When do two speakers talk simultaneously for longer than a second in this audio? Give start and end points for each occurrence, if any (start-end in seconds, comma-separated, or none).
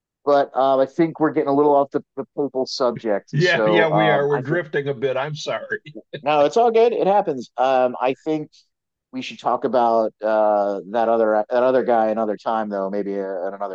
3.3-4.6